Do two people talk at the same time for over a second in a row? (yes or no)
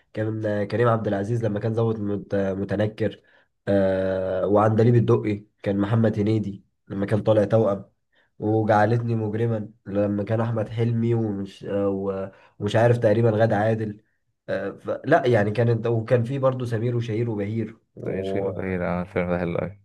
no